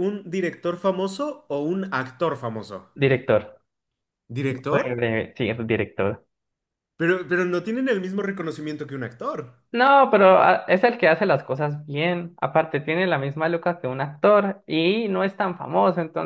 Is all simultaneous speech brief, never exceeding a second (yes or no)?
yes